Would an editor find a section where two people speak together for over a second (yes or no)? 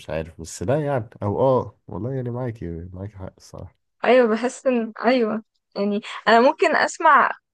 no